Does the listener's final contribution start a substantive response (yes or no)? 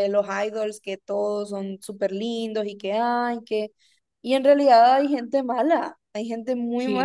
yes